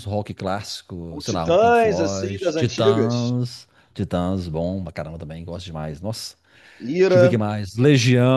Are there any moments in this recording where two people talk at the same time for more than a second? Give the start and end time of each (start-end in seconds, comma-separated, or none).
1.1-3.3